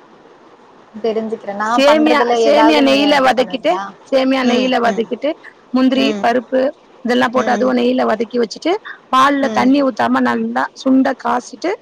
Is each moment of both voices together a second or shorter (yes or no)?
no